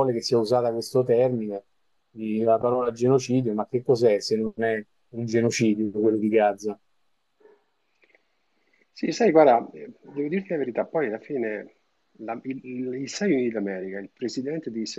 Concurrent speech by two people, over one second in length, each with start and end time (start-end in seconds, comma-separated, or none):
none